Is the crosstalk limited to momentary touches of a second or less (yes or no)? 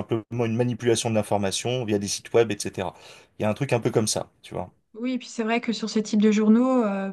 yes